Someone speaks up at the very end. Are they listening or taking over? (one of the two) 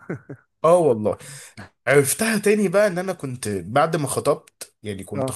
listening